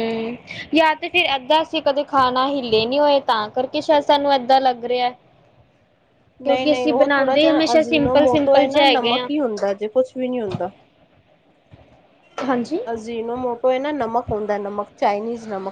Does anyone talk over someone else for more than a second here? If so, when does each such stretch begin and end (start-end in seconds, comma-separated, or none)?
6.4-9.3